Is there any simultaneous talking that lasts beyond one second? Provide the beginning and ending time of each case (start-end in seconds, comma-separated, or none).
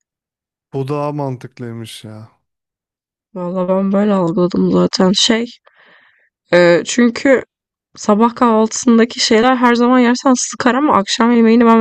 none